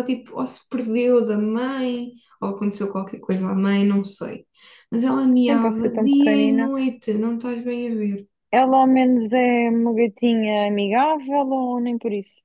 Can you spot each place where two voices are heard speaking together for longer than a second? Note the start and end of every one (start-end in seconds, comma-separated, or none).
5.4-6.6